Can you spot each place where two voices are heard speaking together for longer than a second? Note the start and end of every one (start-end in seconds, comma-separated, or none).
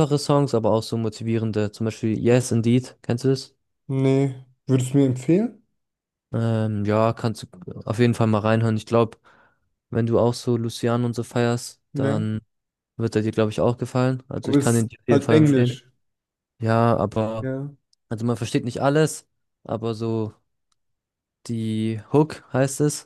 14.4-15.8